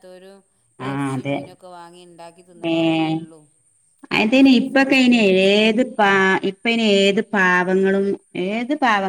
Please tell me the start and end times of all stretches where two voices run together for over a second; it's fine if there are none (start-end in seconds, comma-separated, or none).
4.2-5.6